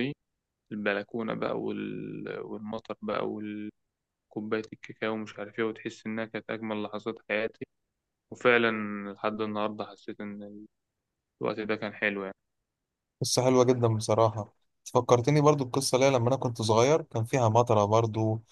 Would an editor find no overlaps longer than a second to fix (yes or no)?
yes